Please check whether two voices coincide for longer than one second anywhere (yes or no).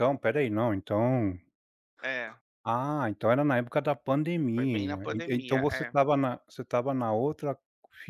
yes